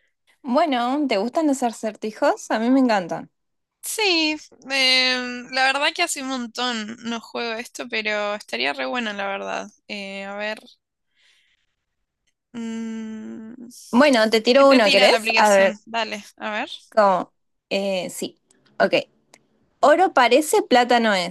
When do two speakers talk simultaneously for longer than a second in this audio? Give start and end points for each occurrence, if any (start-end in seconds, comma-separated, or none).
14.6-15.8